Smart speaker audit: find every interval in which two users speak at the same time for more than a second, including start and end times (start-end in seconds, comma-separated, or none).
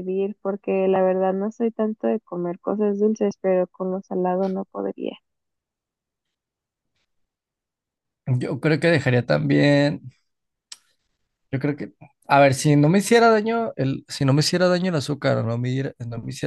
none